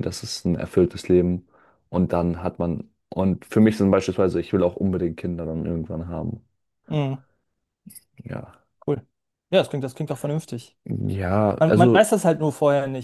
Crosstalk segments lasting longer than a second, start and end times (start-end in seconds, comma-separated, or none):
none